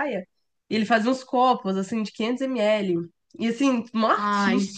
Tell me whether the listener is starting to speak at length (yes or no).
no